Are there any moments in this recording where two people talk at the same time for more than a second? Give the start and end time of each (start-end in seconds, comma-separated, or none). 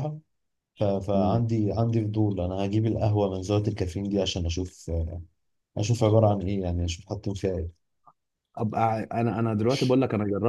none